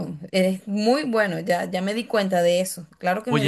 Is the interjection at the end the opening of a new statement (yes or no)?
yes